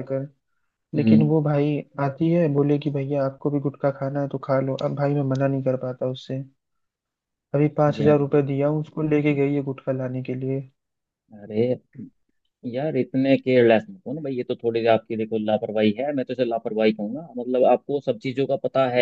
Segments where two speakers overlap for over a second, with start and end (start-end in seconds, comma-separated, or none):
none